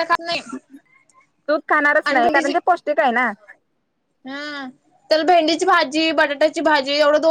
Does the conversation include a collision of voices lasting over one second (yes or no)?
no